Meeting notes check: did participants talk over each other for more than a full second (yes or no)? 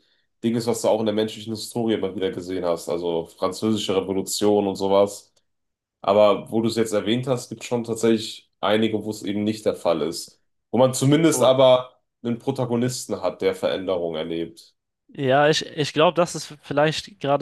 no